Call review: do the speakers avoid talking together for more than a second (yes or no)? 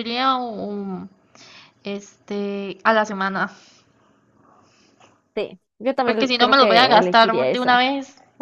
no